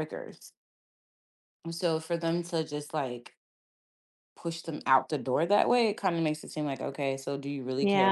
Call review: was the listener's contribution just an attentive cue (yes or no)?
no